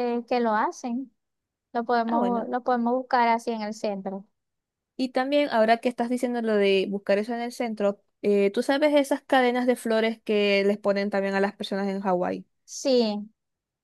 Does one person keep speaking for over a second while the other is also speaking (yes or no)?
no